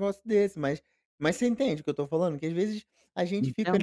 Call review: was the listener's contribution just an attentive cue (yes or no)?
yes